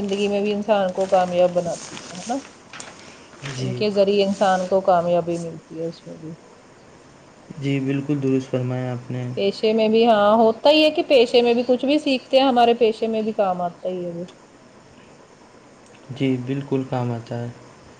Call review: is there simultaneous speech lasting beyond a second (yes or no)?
no